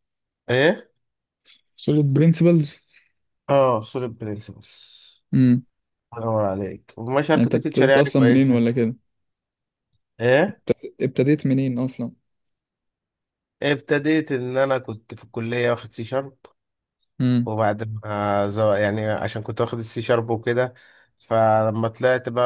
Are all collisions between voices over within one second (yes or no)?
no